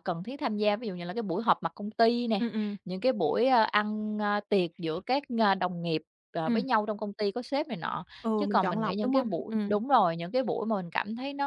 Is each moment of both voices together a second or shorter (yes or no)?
no